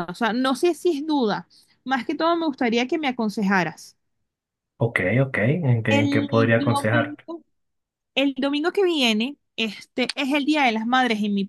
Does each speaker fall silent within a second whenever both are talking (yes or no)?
no